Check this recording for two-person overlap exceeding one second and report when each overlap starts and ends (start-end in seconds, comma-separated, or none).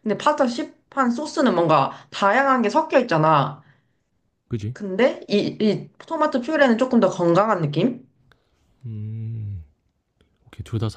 none